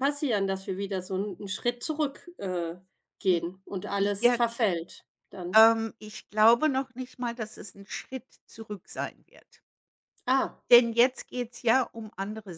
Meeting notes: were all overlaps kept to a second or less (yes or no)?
yes